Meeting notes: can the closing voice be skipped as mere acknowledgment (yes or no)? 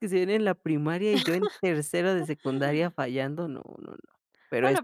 no